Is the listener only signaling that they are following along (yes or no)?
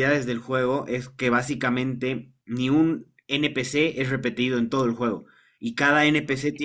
yes